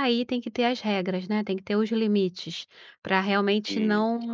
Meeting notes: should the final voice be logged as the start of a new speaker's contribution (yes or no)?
no